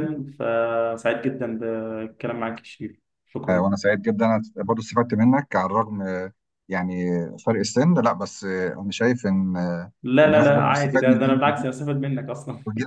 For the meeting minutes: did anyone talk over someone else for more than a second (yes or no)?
yes